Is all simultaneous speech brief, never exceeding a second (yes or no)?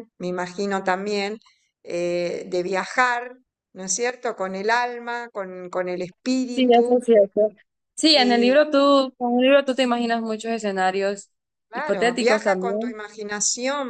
no